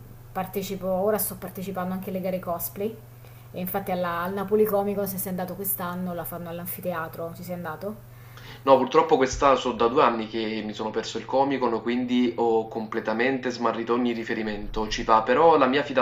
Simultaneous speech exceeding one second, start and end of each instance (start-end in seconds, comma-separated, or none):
none